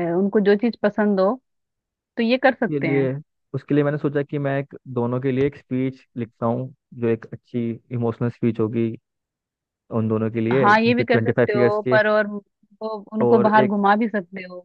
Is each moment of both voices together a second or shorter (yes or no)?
no